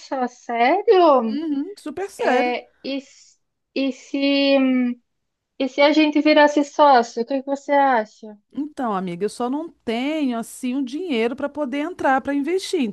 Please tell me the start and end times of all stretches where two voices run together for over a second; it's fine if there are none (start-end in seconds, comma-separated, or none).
none